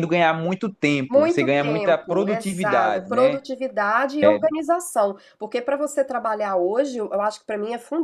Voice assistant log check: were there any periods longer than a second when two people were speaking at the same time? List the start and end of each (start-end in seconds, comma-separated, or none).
1.1-3.4